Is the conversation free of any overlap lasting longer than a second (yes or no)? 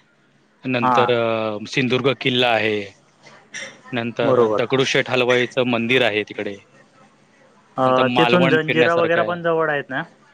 no